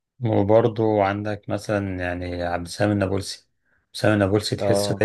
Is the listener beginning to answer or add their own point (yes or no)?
no